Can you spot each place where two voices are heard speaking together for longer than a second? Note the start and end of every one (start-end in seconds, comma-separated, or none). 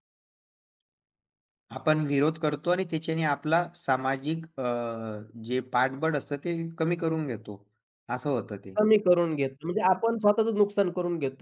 none